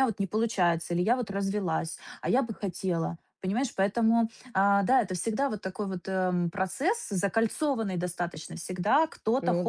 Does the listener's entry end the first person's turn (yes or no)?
no